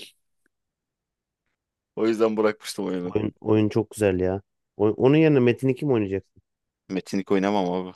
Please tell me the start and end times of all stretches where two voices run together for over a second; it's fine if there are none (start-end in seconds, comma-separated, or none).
none